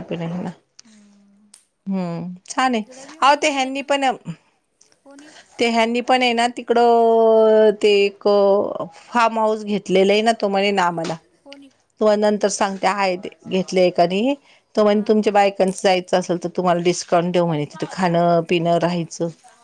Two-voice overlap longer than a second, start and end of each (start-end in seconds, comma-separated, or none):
none